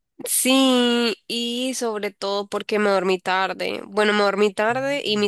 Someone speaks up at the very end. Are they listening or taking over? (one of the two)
listening